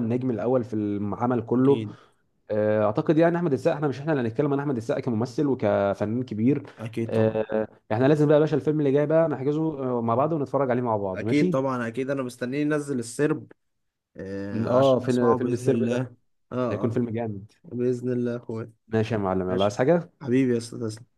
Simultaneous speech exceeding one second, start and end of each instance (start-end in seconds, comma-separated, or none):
14.7-16.0